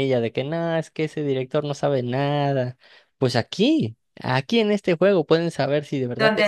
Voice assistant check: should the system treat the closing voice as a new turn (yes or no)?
no